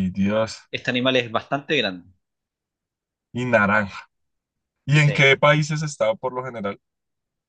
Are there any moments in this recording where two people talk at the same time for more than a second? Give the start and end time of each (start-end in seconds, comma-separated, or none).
none